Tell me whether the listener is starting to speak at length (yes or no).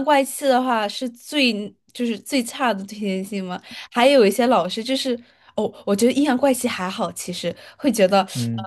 no